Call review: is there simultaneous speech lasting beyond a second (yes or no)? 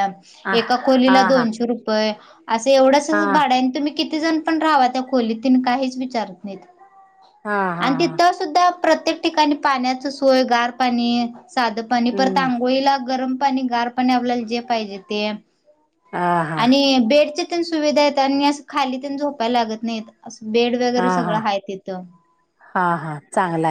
no